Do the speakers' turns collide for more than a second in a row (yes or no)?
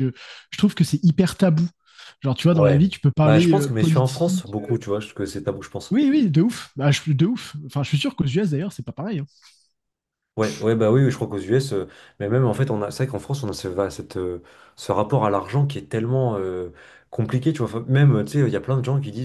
yes